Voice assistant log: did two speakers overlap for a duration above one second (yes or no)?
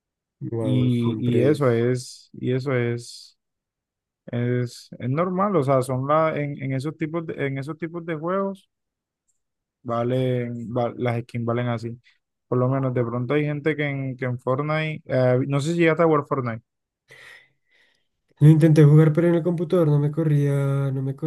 yes